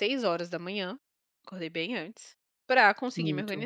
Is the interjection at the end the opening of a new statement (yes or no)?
no